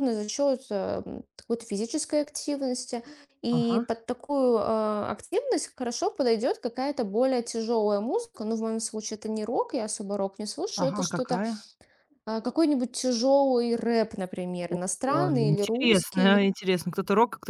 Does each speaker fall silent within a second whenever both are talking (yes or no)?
no